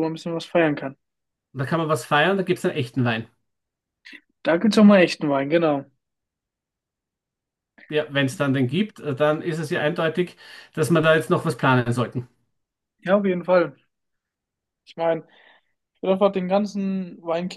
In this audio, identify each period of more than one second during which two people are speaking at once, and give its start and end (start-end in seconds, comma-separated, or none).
none